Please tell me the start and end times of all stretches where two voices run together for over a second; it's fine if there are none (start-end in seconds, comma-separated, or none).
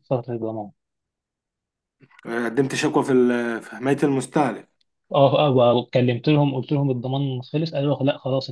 none